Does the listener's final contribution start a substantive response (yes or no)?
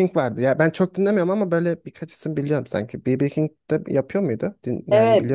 yes